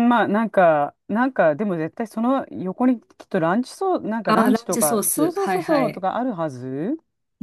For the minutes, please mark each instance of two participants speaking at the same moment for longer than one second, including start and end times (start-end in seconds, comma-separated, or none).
4.3-6.1